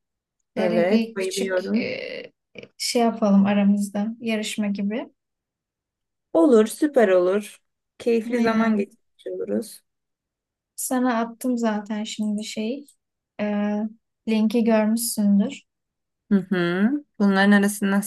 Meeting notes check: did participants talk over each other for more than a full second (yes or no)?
yes